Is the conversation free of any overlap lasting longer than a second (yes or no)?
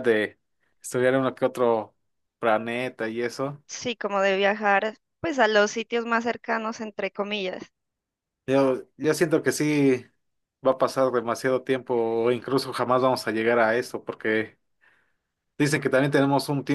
yes